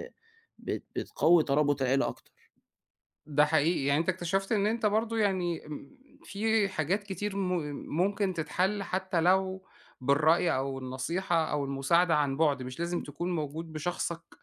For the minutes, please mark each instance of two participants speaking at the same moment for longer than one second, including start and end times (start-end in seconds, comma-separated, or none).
none